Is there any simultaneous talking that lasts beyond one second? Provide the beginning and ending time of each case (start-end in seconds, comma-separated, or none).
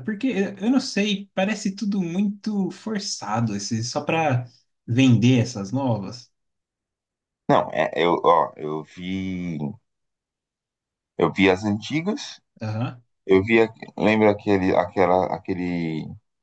none